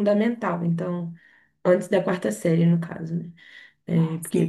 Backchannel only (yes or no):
yes